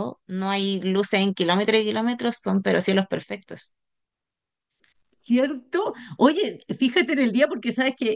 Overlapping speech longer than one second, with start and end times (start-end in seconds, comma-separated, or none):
none